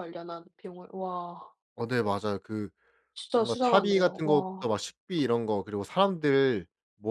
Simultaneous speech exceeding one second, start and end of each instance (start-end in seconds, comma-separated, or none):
3.4-4.7